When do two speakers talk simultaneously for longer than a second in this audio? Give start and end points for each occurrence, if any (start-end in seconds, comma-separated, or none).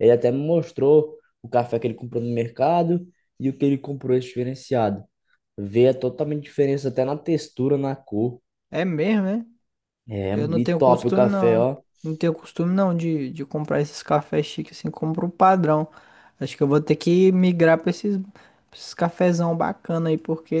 10.3-11.7